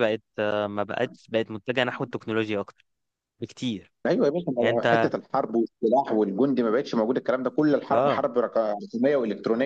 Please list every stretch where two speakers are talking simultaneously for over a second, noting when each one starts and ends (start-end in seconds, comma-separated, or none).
none